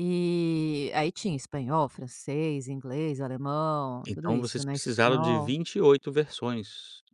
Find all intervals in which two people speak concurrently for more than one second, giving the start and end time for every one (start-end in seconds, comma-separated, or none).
4.1-5.5